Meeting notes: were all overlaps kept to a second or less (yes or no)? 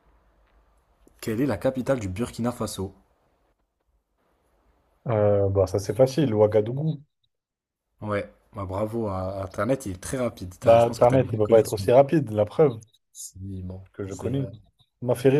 no